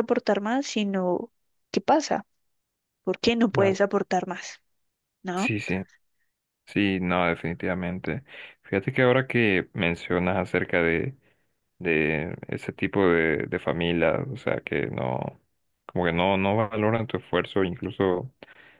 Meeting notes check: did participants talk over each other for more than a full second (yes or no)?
no